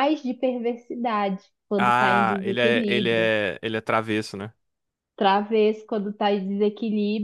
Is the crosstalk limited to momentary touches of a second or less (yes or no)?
no